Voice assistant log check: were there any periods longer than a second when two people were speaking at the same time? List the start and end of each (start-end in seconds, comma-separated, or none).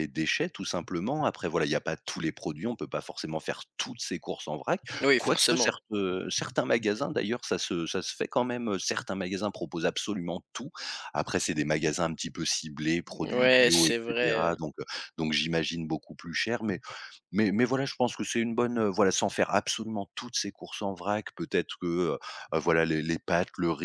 13.1-14.6